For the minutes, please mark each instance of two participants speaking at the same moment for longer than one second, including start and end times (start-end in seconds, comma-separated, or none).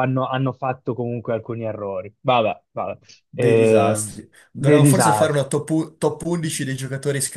3.4-5.5